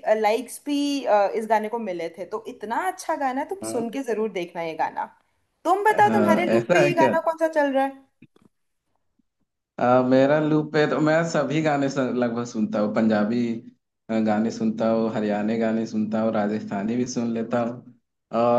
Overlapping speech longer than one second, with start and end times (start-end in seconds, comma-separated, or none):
5.9-7.1